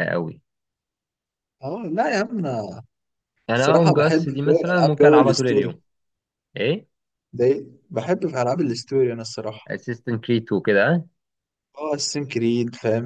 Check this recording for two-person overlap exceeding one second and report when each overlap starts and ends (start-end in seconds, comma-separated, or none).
3.5-5.8